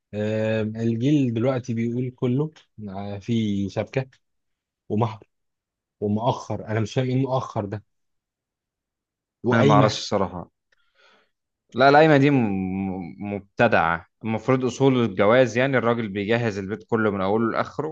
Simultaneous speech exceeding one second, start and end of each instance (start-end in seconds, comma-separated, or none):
none